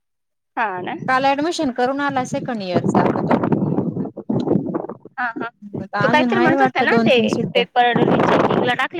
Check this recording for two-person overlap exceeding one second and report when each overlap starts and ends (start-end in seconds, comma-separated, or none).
none